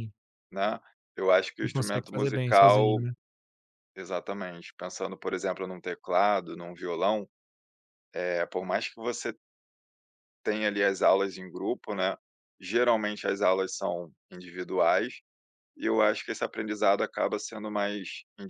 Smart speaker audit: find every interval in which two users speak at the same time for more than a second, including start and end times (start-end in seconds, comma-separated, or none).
1.6-3.0